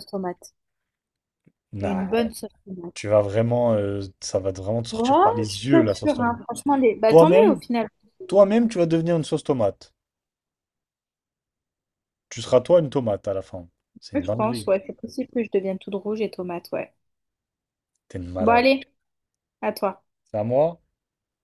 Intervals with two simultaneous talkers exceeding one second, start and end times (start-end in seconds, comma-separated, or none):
4.9-6.3